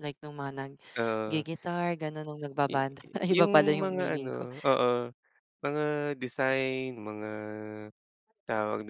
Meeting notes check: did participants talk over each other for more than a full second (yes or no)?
yes